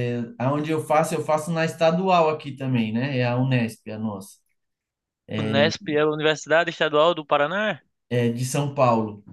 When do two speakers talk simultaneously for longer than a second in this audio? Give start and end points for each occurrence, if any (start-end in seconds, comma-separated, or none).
none